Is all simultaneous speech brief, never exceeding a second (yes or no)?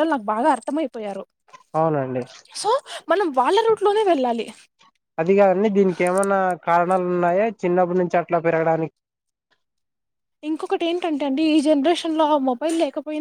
yes